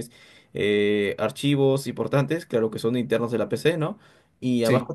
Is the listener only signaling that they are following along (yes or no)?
yes